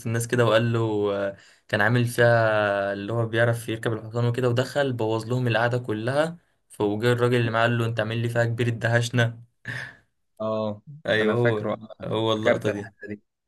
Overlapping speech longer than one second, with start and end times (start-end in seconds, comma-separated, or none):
11.2-12.9